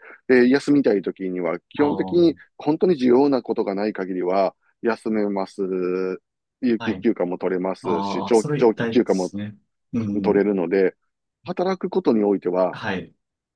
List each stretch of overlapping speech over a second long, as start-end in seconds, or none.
7.8-9.3